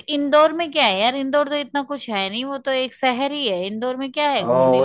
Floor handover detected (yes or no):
yes